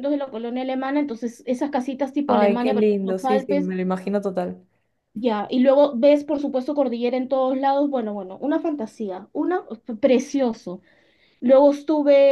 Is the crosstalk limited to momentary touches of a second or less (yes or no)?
no